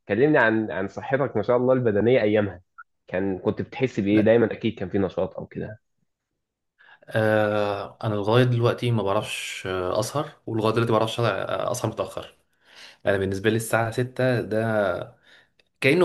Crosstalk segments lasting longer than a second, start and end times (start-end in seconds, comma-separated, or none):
none